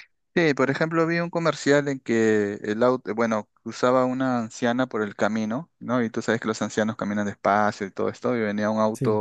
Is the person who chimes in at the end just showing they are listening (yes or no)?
yes